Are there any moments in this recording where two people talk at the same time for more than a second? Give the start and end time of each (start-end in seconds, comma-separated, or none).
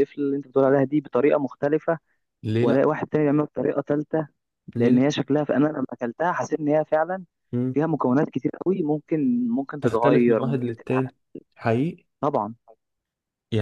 9.8-11.0